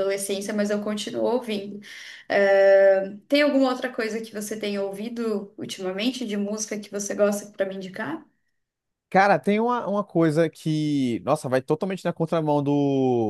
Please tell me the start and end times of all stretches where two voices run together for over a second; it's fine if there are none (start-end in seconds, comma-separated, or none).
none